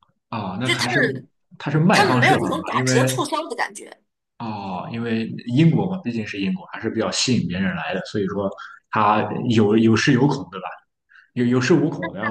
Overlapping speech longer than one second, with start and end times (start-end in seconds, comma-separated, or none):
1.9-3.2